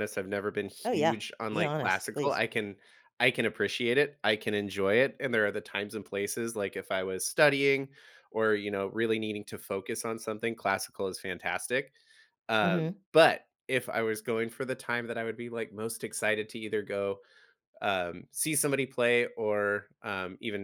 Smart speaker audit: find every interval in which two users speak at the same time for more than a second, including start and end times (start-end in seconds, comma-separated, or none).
0.8-2.4